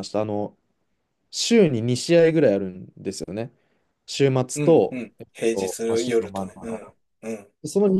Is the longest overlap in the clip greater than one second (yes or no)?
yes